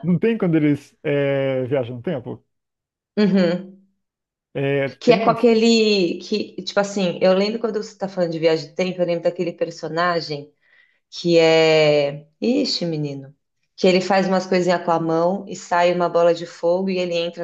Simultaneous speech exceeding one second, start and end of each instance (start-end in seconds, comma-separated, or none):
none